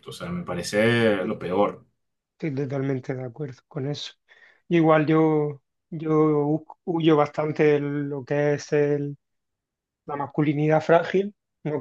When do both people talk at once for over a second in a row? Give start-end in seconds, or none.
none